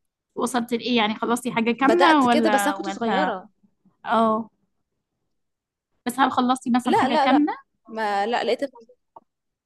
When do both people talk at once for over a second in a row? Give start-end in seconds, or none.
1.8-3.3